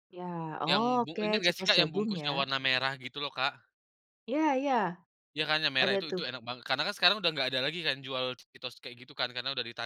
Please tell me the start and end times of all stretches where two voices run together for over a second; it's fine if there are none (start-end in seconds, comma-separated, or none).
0.7-2.4